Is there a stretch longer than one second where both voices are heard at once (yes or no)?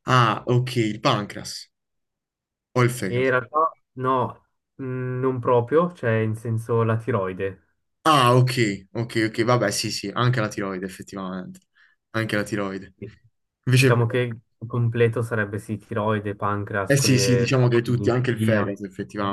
yes